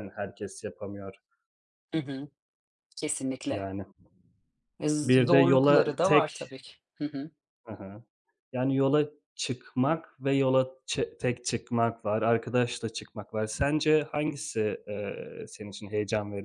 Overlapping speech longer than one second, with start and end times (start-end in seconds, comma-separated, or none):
5.0-6.5